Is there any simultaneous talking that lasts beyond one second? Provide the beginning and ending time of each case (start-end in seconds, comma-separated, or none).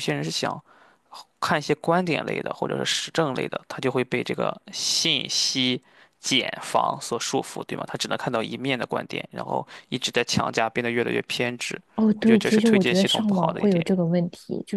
12.0-13.8